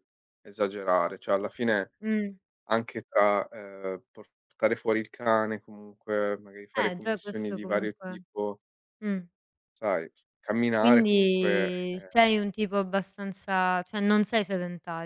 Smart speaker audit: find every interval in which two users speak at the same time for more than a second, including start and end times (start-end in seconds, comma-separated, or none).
6.7-8.2, 10.8-12.1